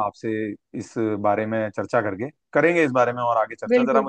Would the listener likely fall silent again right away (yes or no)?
yes